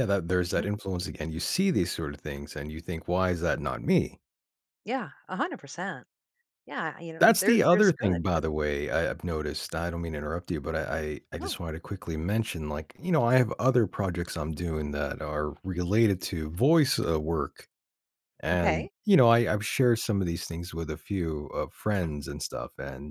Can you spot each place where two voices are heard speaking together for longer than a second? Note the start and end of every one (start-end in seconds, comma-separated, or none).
7.2-8.4